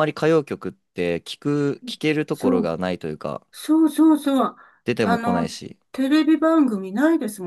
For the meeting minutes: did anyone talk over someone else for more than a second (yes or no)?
no